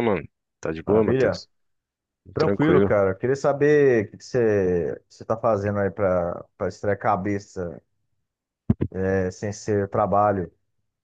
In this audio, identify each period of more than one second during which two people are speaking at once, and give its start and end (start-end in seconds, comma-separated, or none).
none